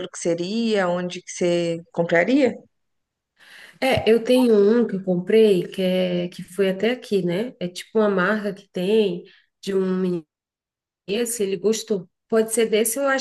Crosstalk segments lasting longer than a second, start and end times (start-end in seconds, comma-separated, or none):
none